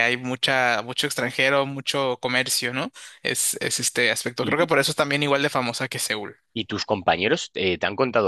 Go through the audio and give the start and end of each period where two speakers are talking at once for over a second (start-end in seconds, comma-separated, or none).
none